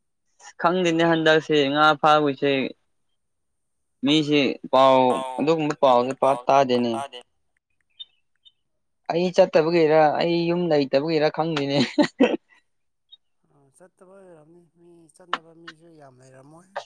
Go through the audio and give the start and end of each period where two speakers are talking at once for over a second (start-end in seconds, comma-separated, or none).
none